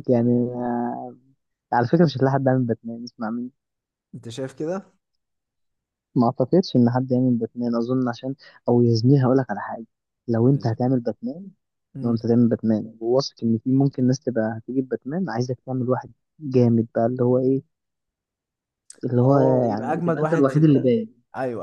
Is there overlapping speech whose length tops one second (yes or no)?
yes